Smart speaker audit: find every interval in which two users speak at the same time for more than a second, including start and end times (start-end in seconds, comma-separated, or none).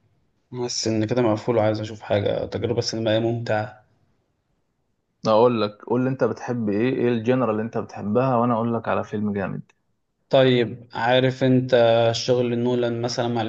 none